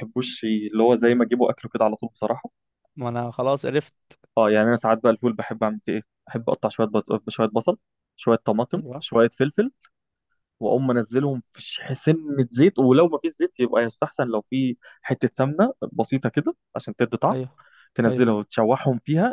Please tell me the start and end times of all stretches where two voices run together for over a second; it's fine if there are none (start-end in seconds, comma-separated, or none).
none